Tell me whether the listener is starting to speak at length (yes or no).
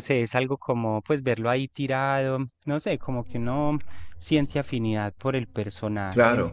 no